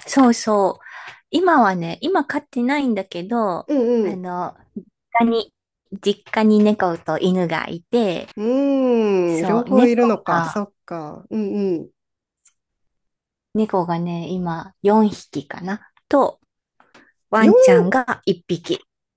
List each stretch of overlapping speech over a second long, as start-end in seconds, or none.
9.2-10.6